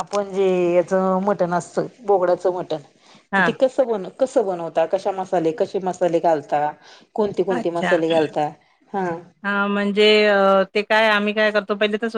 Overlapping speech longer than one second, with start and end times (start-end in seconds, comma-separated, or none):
none